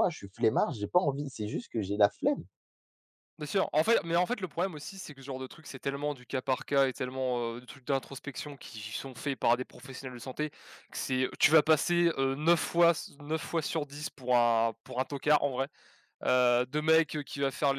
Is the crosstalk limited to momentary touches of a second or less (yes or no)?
yes